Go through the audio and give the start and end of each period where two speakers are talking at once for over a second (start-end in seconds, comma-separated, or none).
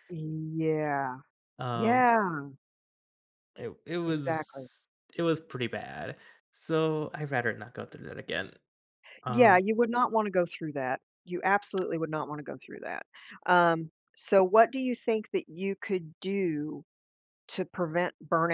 none